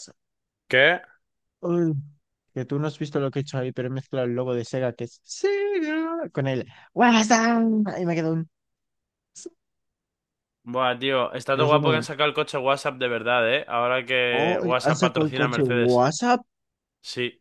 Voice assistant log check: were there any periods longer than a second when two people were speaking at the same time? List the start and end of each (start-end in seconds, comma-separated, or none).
14.3-16.1